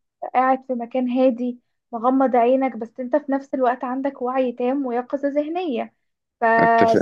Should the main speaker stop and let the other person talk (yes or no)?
no